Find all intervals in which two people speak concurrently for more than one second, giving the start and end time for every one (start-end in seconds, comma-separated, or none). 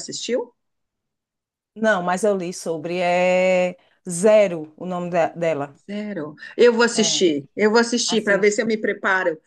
none